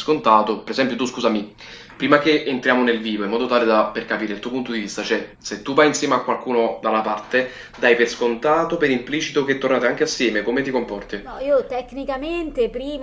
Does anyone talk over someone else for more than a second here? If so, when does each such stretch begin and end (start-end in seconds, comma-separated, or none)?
none